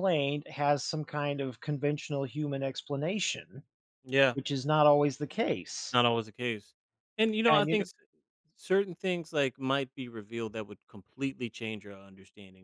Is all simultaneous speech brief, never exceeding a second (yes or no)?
yes